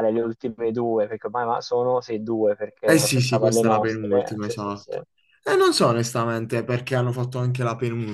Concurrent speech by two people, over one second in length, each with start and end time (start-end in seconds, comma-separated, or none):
2.8-4.9